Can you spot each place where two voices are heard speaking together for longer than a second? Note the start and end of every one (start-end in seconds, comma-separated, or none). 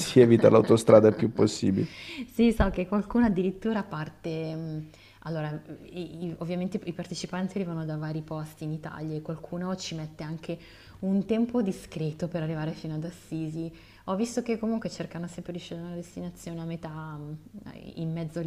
none